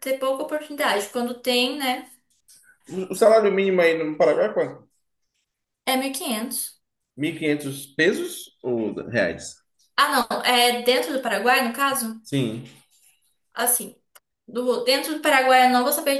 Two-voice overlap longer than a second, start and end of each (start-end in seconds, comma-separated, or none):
none